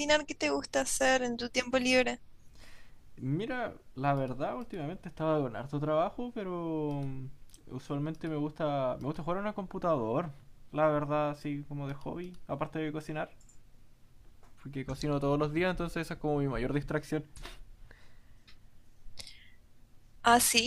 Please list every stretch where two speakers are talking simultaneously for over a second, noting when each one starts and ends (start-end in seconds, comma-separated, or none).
none